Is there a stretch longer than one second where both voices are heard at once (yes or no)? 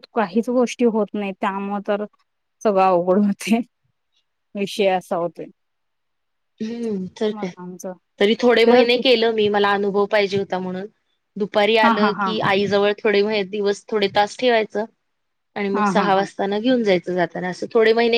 no